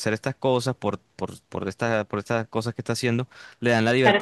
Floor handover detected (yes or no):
yes